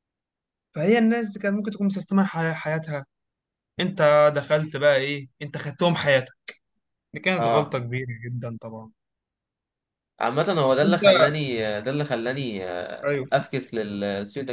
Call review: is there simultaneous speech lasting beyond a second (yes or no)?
no